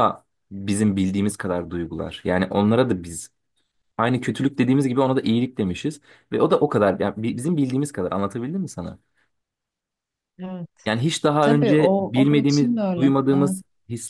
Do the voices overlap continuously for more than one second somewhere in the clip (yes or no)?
yes